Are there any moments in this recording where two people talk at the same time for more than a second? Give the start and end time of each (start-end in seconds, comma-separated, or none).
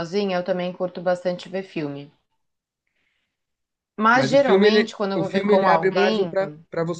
4.1-6.3